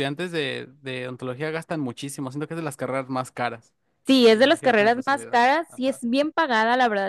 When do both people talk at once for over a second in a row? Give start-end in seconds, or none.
4.3-6.0